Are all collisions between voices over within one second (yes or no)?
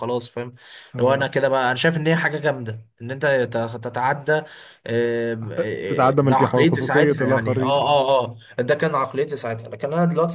no